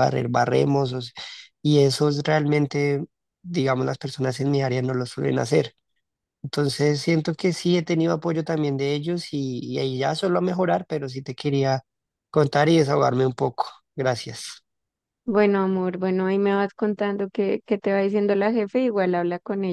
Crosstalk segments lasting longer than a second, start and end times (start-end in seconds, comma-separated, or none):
none